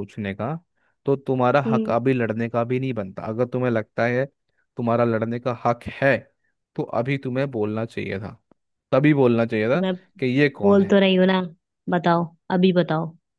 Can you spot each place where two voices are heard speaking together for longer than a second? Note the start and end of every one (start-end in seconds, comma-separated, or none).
none